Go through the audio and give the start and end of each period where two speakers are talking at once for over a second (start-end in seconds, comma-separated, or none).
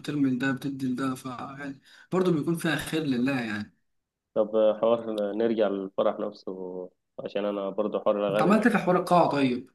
none